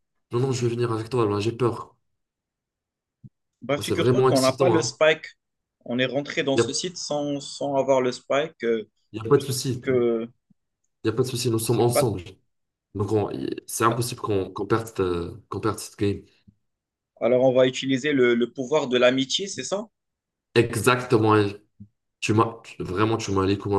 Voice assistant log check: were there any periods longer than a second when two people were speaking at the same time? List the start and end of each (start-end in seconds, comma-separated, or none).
3.8-5.0